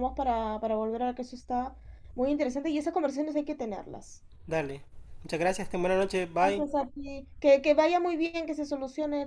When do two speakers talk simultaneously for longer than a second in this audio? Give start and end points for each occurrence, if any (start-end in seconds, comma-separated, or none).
none